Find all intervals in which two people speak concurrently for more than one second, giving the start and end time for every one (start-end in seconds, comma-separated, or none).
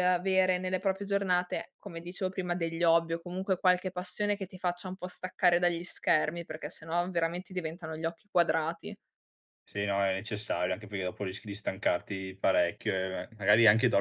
none